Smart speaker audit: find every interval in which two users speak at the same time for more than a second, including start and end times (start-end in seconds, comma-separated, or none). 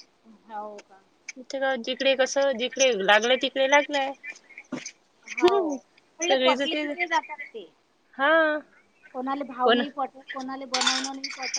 5.4-7.0